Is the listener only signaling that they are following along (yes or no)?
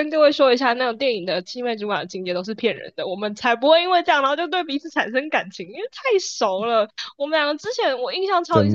yes